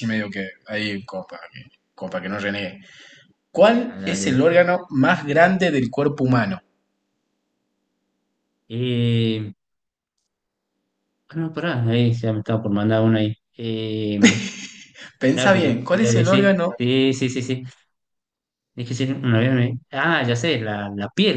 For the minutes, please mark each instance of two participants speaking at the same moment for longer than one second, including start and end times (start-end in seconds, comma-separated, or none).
15.3-16.7